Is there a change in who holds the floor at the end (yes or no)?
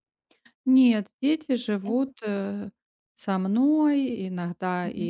no